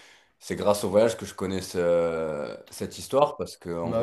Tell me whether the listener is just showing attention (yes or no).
yes